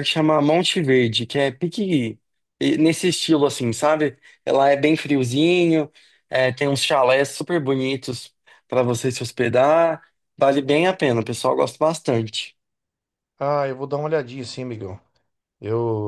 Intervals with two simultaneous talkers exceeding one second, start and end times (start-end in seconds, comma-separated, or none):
none